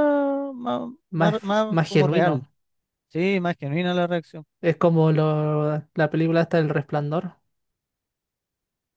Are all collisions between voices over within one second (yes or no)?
no